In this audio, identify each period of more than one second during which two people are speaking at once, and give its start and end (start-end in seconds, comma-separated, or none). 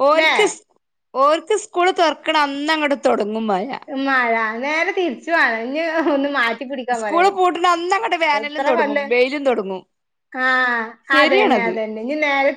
none